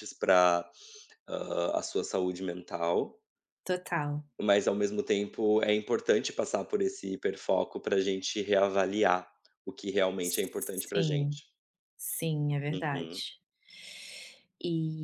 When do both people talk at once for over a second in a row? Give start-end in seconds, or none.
10.2-11.4